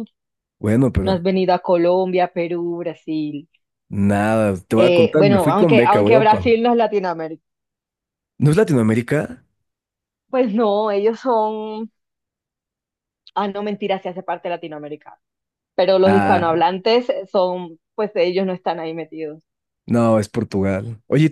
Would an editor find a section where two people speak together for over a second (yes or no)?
yes